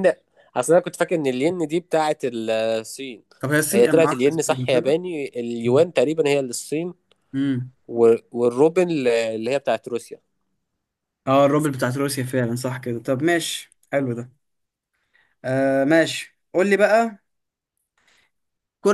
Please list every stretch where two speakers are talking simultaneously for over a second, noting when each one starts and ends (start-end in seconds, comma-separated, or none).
3.7-5.0